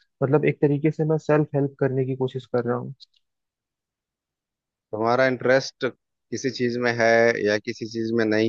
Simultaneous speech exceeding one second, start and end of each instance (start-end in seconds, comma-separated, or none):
none